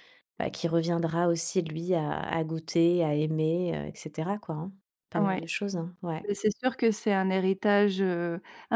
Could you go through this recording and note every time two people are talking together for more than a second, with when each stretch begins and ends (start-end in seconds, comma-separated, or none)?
none